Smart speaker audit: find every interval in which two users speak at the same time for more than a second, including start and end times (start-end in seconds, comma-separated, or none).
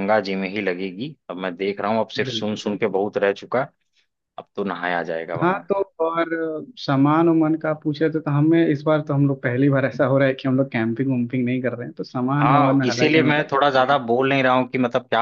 12.4-14.0